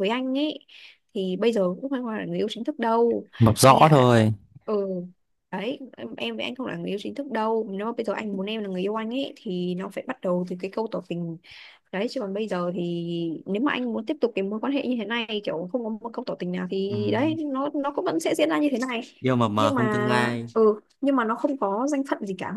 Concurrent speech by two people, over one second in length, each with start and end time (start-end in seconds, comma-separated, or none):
none